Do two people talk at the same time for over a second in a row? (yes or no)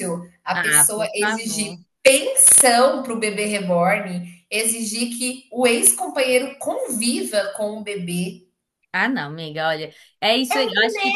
yes